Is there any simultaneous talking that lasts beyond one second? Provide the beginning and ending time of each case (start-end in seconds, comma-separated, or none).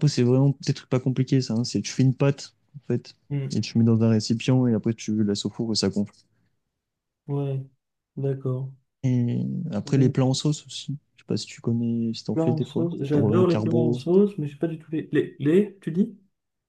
12.3-14.0